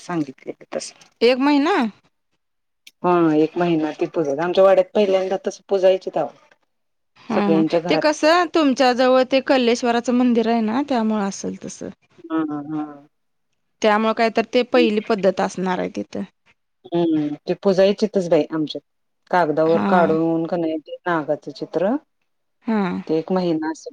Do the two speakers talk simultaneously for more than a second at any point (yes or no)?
no